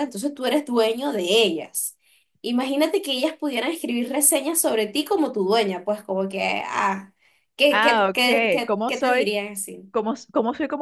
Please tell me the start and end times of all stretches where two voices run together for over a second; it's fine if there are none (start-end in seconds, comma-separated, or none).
7.7-9.3